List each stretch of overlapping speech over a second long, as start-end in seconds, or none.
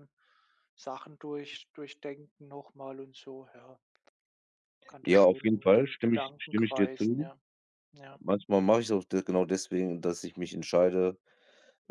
5.0-7.3